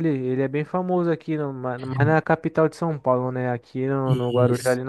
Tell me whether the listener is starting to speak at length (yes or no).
no